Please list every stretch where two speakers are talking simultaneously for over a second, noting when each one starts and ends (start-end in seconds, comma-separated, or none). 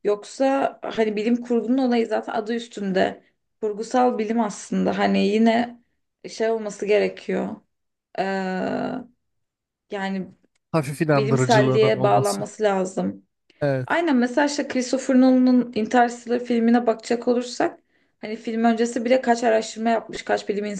11.2-12.4